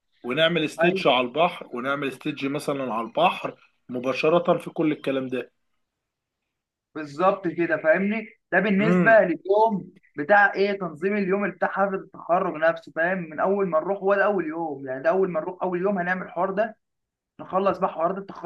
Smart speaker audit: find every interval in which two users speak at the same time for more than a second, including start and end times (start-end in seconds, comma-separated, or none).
none